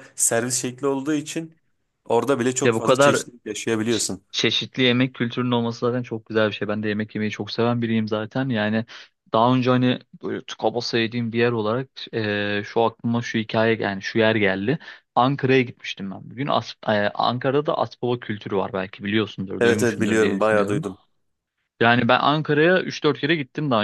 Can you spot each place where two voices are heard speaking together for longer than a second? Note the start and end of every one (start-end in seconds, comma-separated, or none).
19.6-20.8